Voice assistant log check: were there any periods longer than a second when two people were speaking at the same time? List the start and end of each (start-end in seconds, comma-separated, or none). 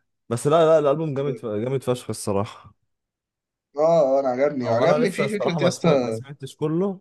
4.6-6.2